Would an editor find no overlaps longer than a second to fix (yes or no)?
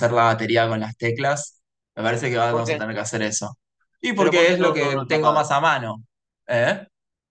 no